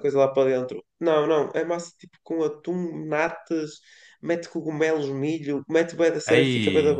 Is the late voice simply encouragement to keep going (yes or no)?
yes